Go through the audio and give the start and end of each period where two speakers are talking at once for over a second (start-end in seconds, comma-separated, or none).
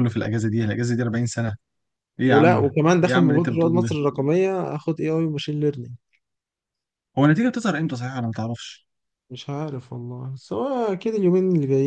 2.3-4.0